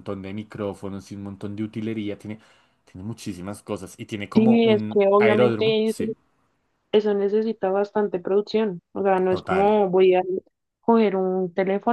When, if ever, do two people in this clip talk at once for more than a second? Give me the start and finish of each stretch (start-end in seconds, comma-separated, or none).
4.3-6.0